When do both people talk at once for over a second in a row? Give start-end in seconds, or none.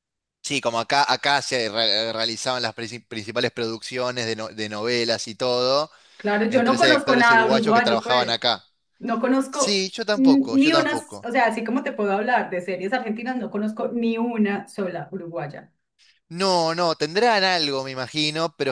6.5-8.4, 9.5-11.3